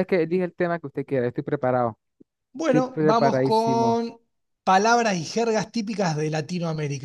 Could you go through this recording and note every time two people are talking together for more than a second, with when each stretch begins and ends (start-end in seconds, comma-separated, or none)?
2.7-4.0